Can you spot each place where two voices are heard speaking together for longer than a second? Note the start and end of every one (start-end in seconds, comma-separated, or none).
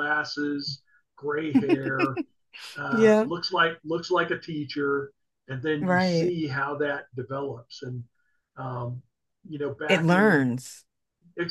none